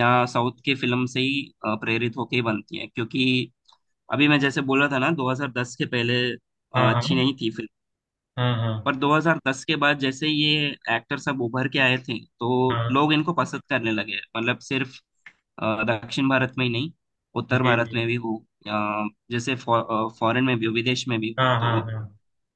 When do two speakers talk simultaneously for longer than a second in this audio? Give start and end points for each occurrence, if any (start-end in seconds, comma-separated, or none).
none